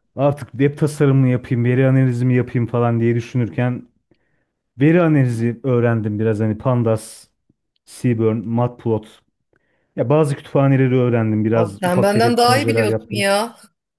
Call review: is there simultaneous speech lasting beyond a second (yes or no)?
yes